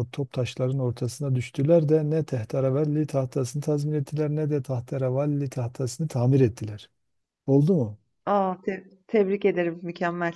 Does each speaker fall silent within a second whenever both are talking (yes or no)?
yes